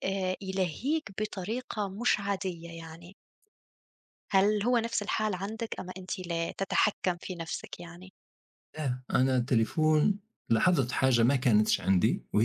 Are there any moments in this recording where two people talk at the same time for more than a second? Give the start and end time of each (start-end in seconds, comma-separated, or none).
none